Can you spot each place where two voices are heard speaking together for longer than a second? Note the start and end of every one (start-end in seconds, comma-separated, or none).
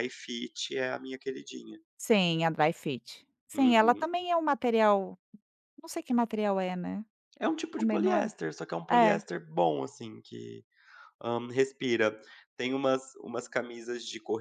none